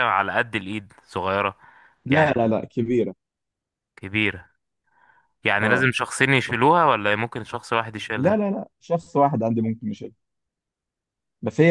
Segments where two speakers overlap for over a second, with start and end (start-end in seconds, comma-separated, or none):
none